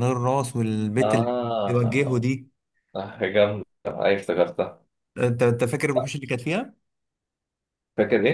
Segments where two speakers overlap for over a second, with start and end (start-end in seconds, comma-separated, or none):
1.0-2.3